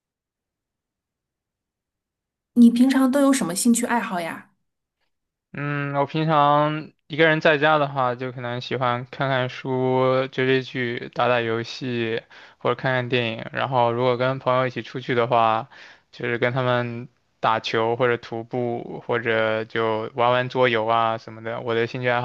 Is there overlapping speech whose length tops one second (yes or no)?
no